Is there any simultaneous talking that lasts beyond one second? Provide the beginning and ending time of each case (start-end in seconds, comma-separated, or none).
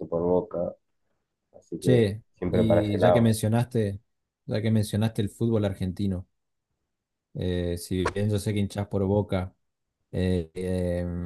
1.8-3.4